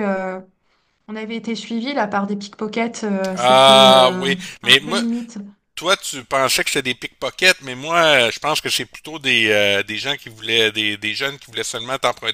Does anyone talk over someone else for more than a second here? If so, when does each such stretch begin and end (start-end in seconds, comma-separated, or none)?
3.3-5.0